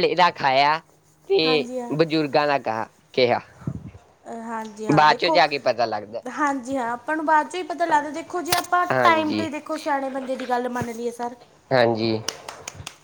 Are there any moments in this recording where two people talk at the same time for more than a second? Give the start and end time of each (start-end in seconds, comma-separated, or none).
none